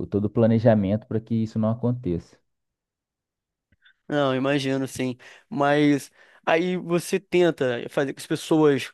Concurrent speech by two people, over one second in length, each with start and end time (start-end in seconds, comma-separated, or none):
none